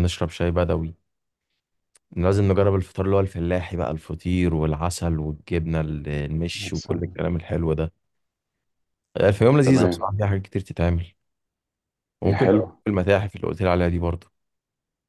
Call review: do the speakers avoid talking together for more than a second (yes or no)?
yes